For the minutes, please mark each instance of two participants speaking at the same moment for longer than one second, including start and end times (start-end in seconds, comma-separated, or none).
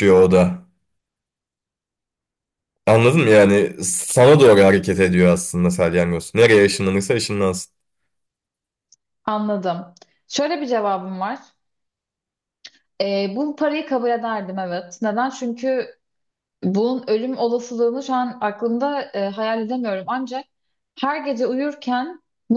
none